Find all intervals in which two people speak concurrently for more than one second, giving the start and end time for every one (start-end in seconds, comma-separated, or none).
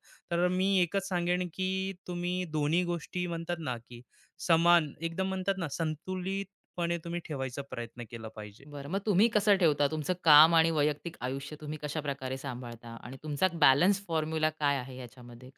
none